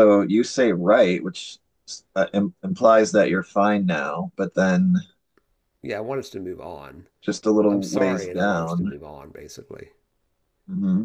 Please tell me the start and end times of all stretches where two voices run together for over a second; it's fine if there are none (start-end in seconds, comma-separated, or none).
7.7-8.9